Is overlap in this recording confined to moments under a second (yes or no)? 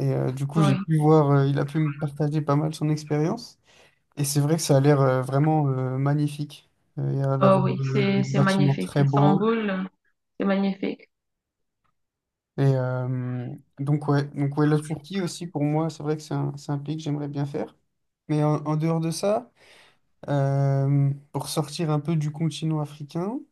no